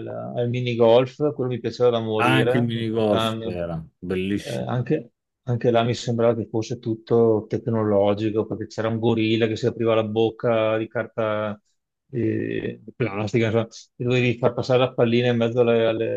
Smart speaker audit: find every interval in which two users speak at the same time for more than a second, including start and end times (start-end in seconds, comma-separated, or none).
2.2-3.6